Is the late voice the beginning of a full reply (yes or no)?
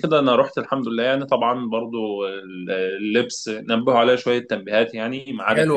yes